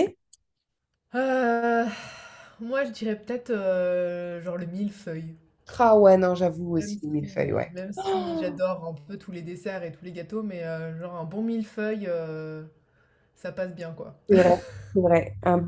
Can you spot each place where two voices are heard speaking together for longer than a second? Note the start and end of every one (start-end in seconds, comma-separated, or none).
none